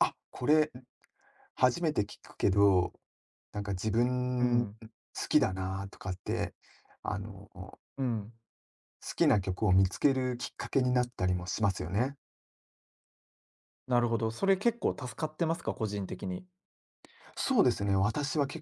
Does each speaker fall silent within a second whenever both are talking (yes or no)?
yes